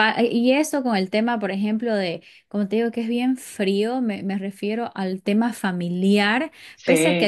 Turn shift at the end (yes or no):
no